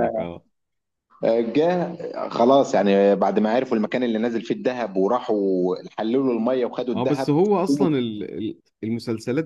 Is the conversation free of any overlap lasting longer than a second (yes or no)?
yes